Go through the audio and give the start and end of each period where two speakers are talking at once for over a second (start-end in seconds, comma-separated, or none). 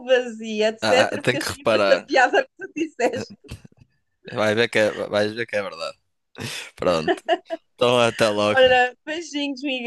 0.8-2.1